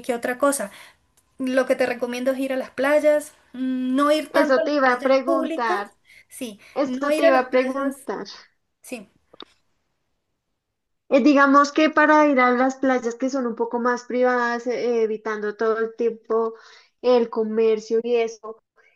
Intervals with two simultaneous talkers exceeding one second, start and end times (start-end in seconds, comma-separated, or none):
4.3-5.8, 6.7-7.9